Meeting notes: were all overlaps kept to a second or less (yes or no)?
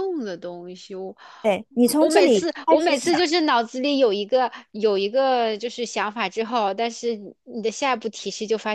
no